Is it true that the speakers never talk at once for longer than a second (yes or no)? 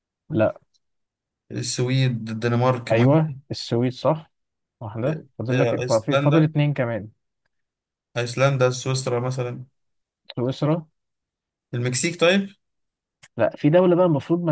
no